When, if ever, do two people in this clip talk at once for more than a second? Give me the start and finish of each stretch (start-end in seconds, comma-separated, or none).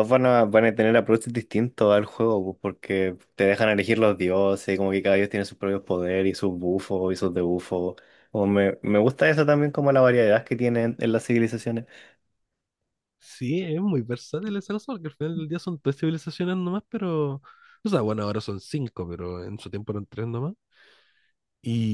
none